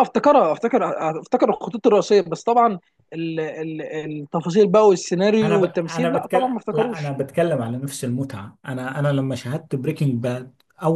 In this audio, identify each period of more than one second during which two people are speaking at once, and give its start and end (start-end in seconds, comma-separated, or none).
5.4-7.2